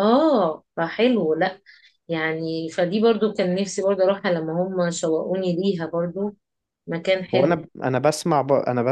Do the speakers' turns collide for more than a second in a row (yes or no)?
no